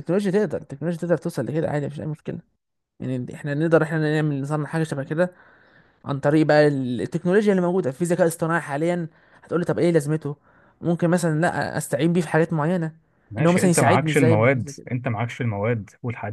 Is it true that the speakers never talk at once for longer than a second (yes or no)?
no